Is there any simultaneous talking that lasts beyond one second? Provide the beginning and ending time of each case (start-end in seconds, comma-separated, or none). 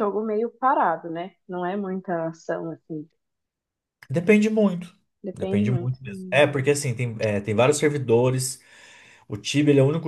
5.3-6.7